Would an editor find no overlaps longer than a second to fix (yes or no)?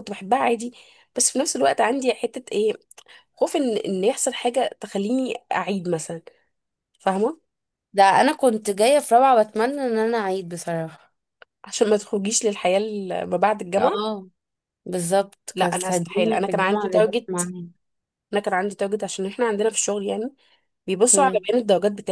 no